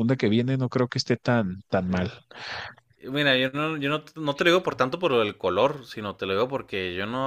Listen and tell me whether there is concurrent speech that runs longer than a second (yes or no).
no